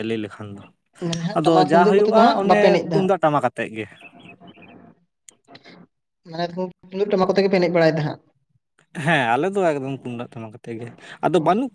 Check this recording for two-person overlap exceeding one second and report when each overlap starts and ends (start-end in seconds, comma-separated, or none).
1.4-3.2